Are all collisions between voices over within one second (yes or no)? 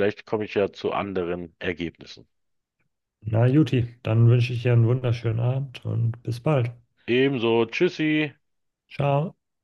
yes